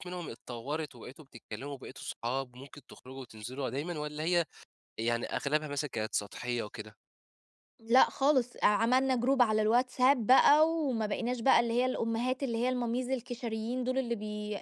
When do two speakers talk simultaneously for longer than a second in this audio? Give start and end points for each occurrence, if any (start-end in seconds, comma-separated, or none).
none